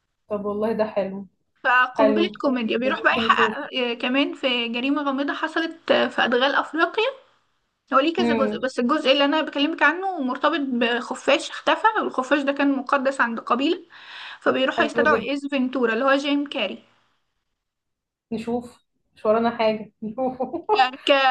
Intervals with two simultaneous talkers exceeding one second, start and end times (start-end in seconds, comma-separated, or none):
1.9-3.6